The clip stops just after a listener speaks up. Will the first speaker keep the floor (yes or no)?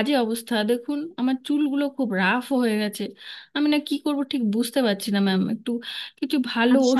no